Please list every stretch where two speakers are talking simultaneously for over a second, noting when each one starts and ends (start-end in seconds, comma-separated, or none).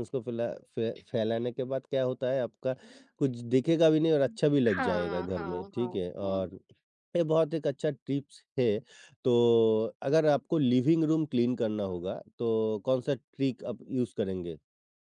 4.8-6.4